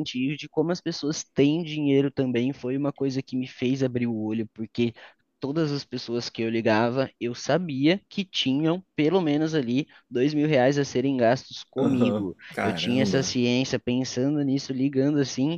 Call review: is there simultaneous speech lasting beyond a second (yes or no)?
yes